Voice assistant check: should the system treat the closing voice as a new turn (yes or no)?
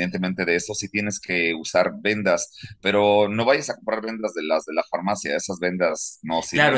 yes